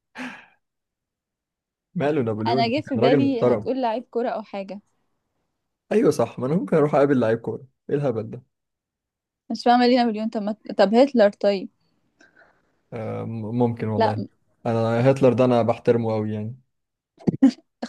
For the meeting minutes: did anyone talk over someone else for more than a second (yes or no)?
yes